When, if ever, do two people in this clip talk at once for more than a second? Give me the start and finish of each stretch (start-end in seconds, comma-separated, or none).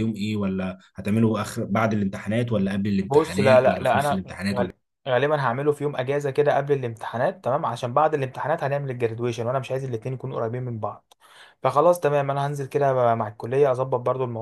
3.1-4.7